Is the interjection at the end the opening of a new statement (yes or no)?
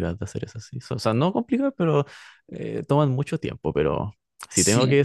no